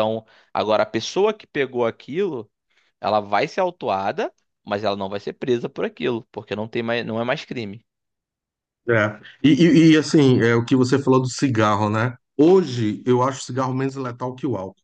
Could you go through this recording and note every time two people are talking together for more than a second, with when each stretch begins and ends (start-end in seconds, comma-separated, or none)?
none